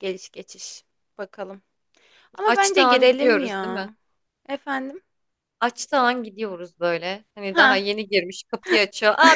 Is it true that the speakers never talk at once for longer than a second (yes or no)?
no